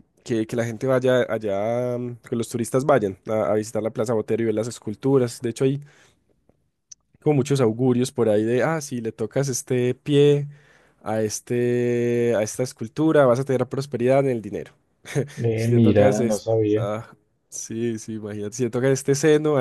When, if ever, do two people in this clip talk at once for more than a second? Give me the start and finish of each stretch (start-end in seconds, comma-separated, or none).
15.5-16.9